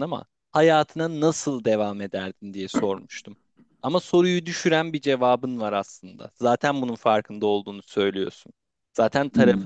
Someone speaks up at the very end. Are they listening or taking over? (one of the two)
listening